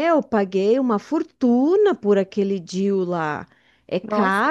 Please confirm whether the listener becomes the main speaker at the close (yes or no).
no